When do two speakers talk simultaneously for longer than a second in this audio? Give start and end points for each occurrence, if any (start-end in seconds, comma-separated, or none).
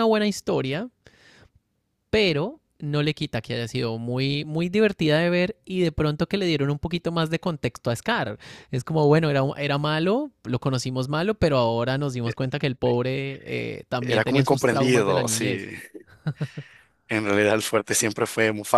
14.0-15.7